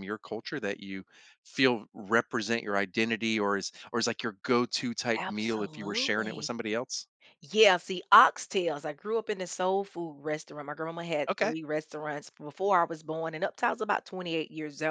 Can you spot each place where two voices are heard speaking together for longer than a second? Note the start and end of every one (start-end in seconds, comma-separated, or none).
5.2-6.5